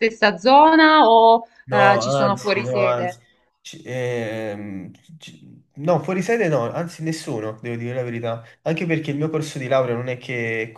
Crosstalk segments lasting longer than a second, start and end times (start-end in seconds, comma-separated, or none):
1.6-3.2